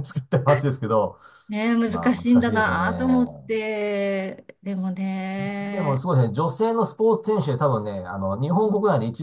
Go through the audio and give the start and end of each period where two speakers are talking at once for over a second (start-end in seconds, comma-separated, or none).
1.9-3.5